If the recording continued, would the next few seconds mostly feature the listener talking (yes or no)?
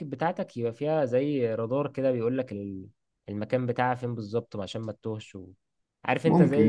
no